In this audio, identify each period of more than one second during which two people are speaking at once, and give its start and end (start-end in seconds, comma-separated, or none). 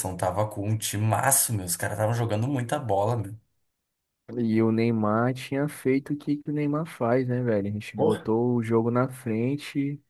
none